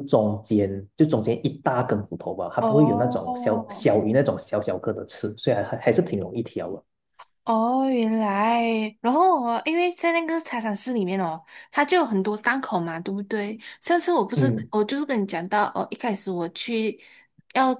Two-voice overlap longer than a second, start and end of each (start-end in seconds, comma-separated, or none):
2.6-3.9